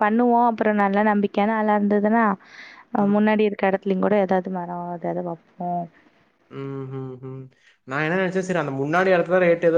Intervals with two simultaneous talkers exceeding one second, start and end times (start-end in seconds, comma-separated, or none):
none